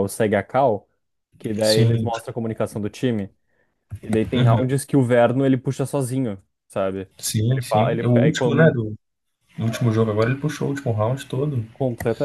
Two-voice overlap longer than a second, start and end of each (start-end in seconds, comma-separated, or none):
7.5-8.8